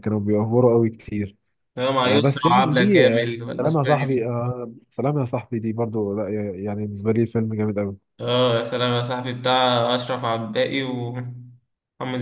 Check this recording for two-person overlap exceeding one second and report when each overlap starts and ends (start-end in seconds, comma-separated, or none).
2.0-4.3